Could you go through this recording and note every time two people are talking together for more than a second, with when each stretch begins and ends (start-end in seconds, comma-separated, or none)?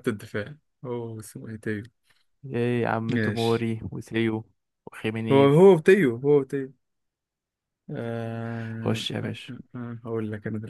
none